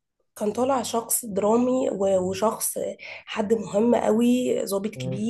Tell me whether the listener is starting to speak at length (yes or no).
no